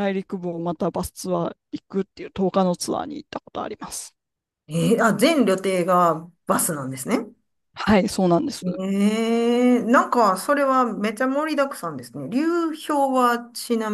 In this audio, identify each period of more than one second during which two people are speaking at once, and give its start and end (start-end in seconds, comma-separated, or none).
none